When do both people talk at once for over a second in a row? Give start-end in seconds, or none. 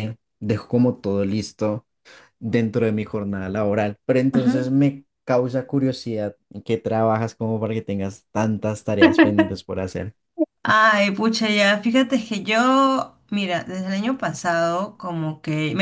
none